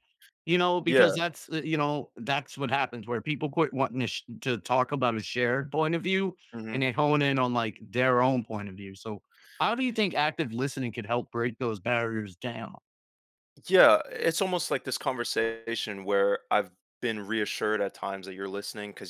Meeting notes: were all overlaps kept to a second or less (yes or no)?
yes